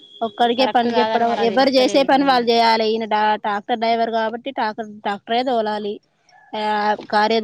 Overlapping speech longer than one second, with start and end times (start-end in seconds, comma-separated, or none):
0.6-2.4